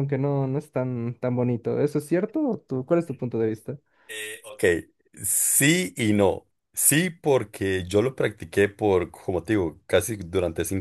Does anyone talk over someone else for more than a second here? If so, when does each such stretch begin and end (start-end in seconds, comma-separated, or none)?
none